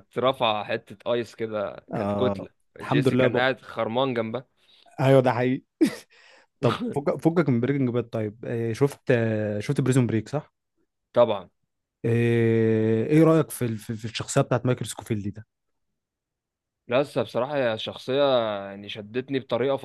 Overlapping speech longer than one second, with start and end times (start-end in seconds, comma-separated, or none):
1.9-3.5